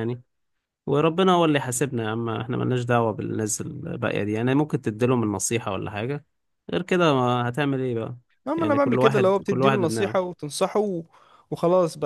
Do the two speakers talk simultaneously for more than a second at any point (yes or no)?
yes